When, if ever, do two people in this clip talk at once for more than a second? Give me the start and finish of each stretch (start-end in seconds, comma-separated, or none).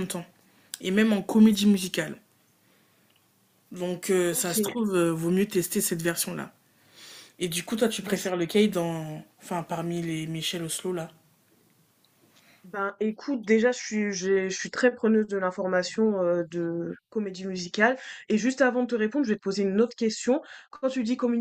none